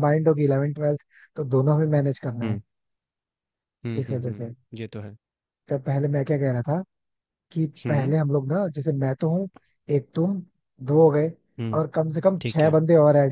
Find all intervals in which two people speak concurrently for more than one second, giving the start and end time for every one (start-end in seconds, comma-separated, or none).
none